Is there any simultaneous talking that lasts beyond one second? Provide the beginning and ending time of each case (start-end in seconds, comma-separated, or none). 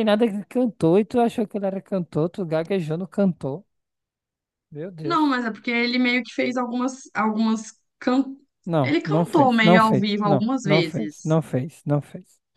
8.8-11.4